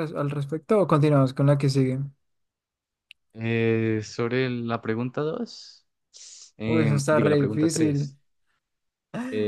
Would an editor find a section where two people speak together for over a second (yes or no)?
yes